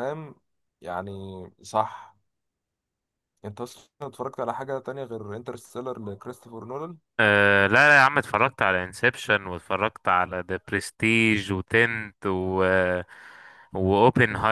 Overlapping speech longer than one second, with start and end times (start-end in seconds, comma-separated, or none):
none